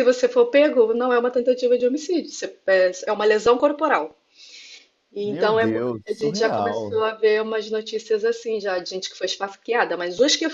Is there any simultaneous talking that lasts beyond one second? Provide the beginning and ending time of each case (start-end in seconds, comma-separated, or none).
5.2-7.0